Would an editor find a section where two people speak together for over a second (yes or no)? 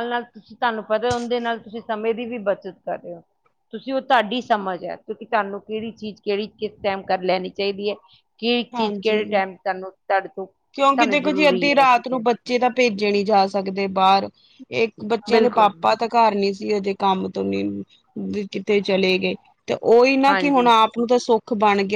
yes